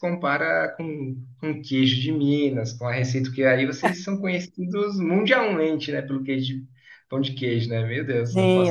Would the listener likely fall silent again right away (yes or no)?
no